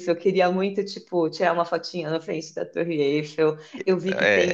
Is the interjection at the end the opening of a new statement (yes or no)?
no